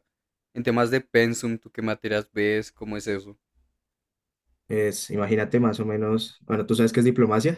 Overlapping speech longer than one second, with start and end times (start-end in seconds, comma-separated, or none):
none